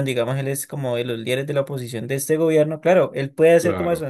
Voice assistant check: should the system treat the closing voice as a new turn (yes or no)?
no